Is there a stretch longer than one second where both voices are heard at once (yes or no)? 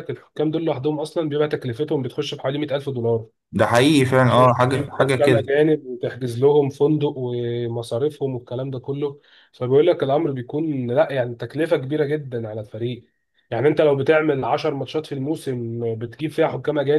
yes